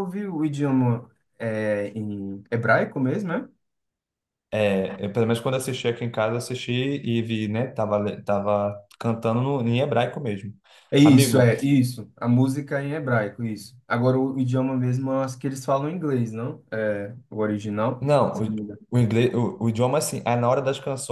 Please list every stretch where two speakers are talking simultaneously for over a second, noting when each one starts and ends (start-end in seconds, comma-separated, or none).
none